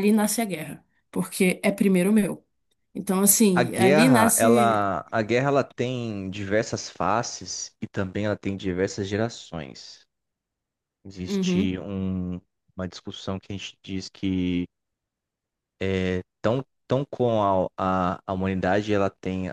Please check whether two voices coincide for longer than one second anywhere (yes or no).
yes